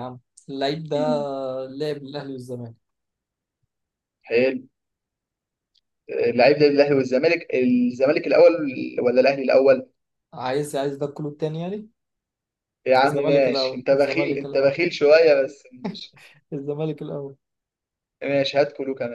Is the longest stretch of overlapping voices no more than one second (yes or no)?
no